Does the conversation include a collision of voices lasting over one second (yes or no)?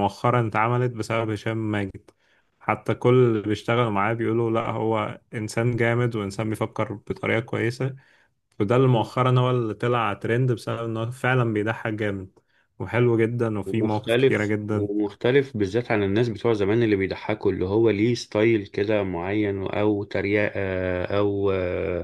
yes